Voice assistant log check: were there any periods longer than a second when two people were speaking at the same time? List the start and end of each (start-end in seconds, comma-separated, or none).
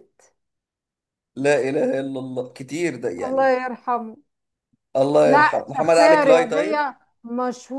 5.3-6.9